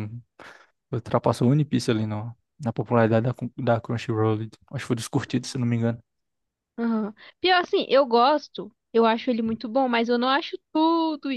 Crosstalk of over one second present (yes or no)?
no